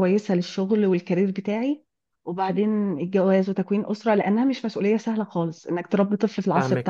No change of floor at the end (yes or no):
no